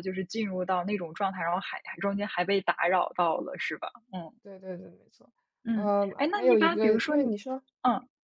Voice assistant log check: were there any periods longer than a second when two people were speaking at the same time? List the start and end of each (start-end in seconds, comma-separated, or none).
5.7-7.3